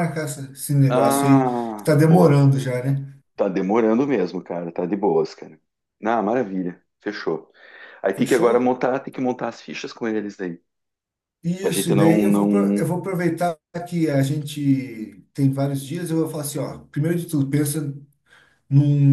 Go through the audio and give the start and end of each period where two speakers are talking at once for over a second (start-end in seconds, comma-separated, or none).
0.9-2.4, 11.6-12.9